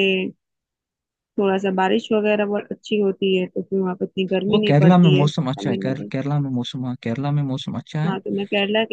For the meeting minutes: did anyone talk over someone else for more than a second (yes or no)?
yes